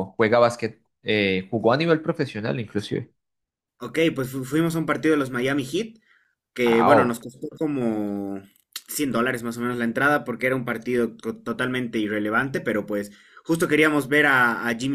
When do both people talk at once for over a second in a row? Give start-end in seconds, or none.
none